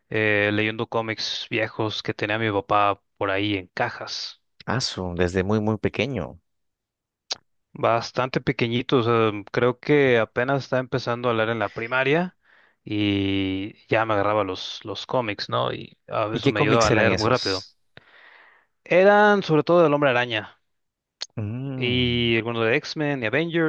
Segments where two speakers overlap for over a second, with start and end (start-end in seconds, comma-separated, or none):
16.3-17.6